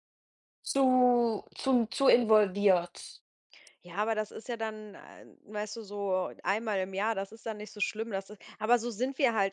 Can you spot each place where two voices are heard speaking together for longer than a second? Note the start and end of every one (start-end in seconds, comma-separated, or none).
none